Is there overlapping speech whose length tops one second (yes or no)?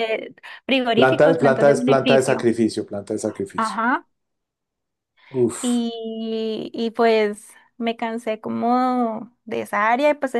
yes